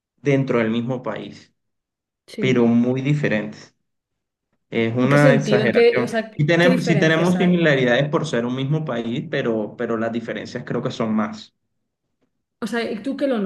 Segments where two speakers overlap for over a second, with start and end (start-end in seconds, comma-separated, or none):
5.0-7.6